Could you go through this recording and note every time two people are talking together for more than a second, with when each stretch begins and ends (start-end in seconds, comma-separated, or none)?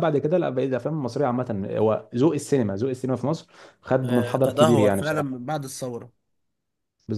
4.0-5.4